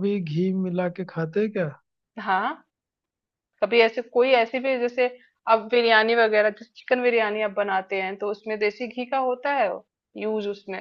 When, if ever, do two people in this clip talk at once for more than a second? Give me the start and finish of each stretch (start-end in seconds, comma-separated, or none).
none